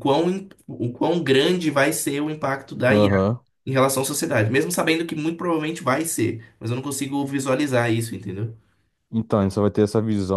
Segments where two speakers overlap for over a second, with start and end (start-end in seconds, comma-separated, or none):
none